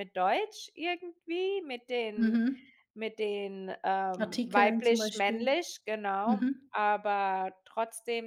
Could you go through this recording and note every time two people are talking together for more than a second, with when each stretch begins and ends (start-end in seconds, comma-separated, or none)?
4.2-5.5